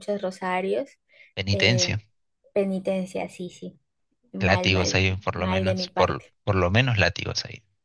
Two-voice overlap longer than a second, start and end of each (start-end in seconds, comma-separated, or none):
4.4-6.3